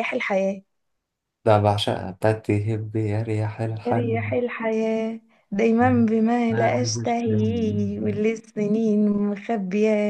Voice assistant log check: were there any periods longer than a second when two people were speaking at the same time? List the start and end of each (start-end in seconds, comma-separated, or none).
6.5-8.2